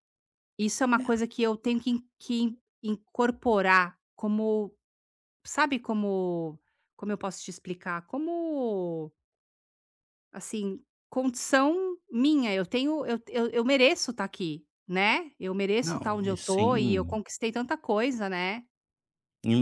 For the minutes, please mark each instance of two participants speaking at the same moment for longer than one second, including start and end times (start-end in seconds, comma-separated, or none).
15.8-17.2